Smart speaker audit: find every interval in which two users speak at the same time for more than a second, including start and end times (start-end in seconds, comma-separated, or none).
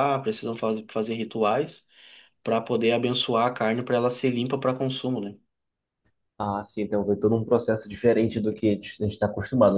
none